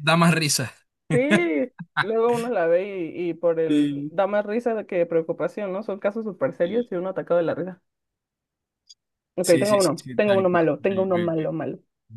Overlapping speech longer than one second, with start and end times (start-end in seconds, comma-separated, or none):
9.4-11.4